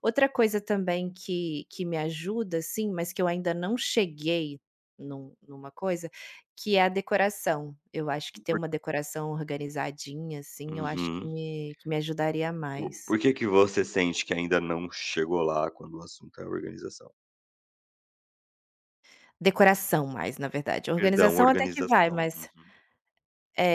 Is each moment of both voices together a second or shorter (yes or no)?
no